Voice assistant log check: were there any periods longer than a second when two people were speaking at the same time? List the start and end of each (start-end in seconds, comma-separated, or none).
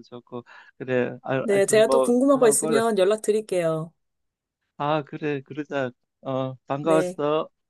1.4-2.8